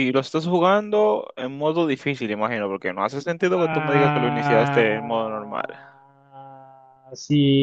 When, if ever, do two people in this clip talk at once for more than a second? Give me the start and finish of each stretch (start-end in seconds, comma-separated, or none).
3.6-4.8